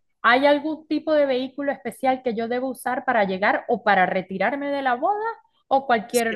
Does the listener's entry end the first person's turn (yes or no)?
no